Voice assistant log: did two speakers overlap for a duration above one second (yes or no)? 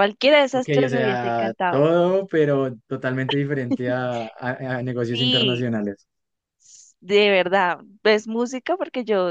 yes